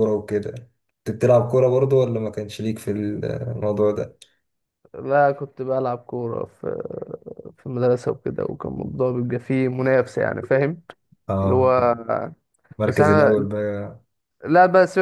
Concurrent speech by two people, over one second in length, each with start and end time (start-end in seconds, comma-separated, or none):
none